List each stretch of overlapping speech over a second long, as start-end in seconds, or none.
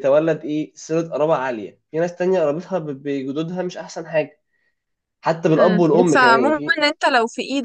5.6-6.9